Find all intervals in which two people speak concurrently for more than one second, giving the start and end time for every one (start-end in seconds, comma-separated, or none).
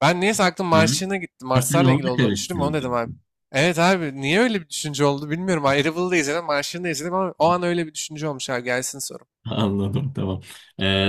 1.5-3.0